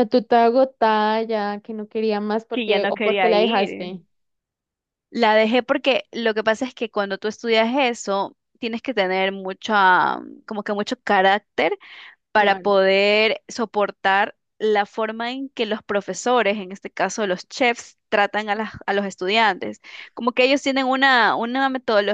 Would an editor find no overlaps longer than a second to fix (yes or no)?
no